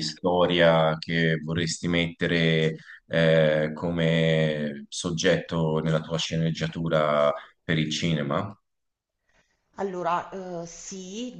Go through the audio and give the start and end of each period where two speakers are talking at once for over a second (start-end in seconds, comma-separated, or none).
none